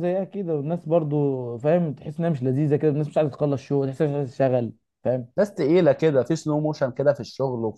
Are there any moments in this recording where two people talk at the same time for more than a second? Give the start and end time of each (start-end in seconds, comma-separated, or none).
none